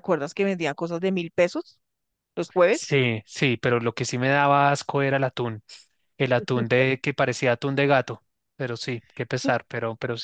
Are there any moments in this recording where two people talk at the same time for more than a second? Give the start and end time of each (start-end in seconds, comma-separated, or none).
none